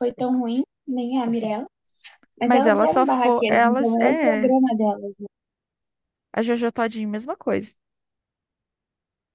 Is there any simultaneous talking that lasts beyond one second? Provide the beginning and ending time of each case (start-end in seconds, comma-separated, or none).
2.4-4.5